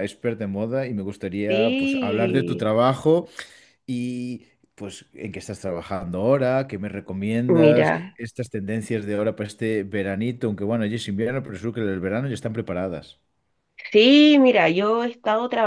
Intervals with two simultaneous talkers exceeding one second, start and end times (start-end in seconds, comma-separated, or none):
1.5-2.7